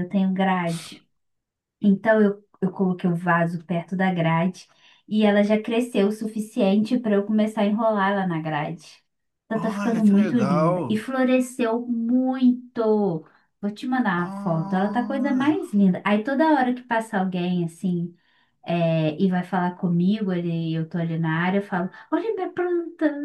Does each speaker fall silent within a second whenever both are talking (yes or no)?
no